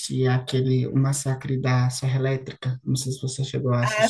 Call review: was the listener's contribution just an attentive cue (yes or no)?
no